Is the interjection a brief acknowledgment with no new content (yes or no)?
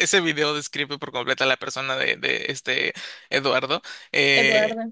yes